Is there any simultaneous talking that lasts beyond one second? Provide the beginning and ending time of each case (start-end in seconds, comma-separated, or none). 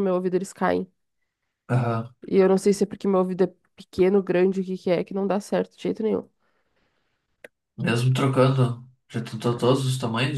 none